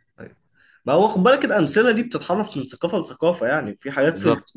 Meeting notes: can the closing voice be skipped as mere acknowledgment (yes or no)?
yes